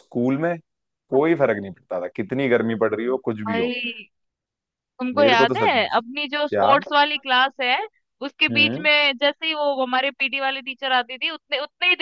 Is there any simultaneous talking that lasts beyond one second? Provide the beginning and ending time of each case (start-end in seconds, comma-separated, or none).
5.2-6.8